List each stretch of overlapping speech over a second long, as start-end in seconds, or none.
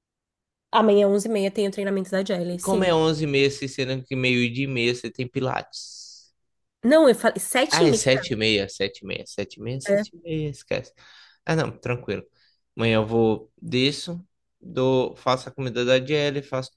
none